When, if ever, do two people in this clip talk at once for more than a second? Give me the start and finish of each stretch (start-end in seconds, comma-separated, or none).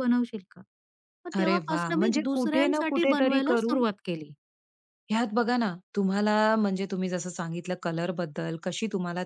1.4-3.8